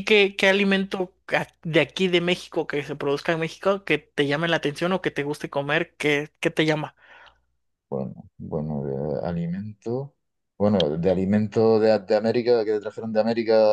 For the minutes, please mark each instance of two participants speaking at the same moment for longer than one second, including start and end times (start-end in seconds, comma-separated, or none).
none